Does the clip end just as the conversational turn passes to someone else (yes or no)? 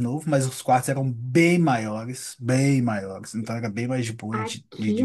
yes